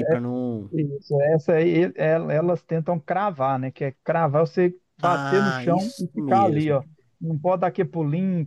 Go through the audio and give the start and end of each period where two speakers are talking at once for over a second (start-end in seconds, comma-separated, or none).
5.0-6.8